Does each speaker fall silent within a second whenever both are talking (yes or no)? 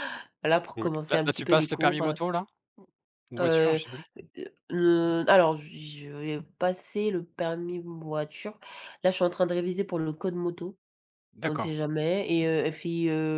no